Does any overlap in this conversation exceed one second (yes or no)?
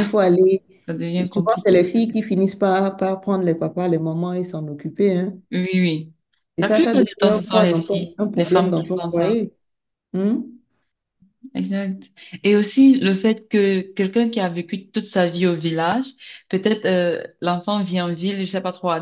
yes